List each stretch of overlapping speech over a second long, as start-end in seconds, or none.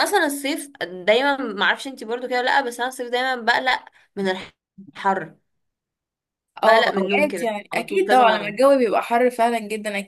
6.6-8.6